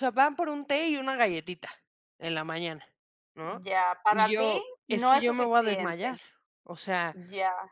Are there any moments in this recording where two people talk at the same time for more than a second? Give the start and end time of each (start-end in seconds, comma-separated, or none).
4.1-6.1